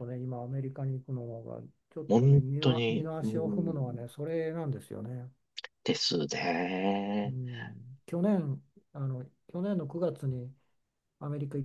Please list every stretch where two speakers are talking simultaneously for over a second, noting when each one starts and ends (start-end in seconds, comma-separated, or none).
2.1-4.1